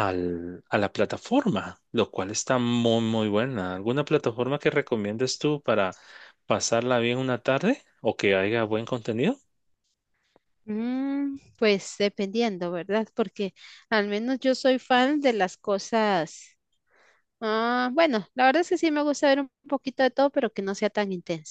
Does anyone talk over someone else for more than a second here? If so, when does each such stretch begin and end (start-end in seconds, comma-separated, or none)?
none